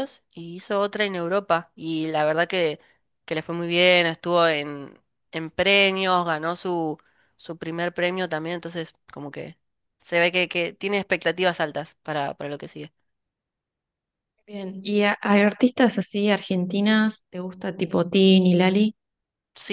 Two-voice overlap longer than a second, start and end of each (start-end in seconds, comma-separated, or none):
none